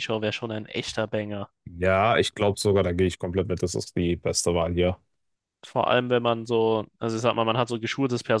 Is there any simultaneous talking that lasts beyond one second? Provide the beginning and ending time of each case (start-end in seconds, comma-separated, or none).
none